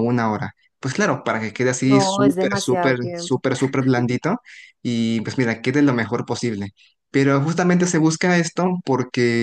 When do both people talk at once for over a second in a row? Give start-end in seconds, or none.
1.8-3.4